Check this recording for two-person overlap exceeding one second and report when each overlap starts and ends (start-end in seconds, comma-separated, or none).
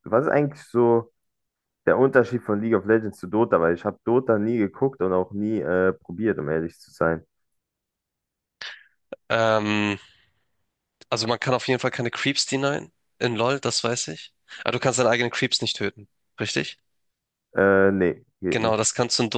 none